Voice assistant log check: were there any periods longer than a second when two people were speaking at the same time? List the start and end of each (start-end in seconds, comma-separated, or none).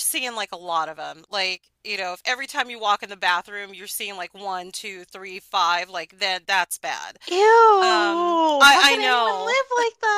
7.8-9.6